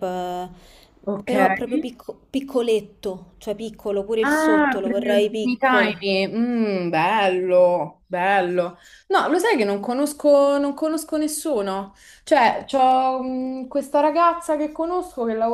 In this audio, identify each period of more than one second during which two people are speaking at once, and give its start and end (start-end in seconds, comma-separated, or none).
4.2-6.1